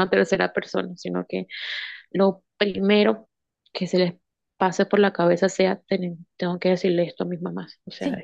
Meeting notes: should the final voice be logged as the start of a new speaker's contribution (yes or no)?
yes